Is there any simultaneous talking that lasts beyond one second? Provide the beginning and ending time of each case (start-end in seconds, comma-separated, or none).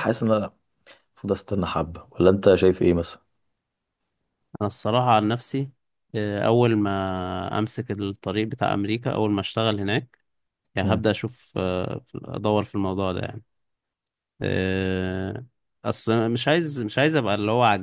none